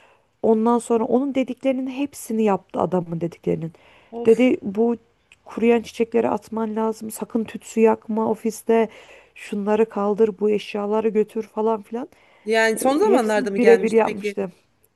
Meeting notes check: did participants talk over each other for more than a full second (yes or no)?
yes